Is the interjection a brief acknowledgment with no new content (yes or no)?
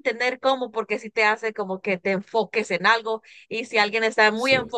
yes